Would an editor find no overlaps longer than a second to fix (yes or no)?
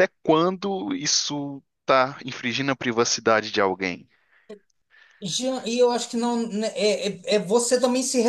yes